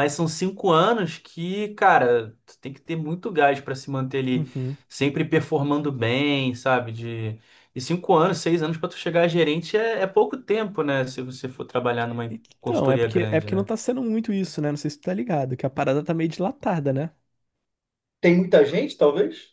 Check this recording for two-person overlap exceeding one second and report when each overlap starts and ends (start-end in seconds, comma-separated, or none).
12.3-13.7